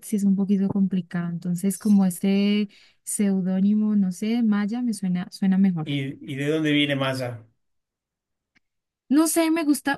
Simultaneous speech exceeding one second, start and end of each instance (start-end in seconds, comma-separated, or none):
none